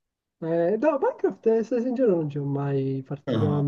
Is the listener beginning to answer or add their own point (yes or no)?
no